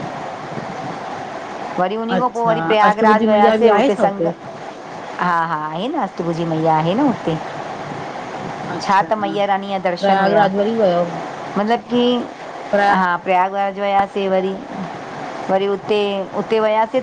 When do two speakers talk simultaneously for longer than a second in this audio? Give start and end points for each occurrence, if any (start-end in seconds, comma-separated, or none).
2.2-4.3